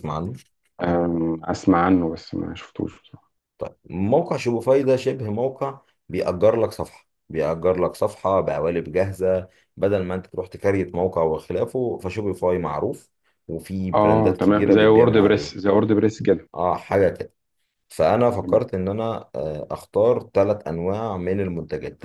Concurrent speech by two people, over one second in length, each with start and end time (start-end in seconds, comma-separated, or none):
13.9-15.6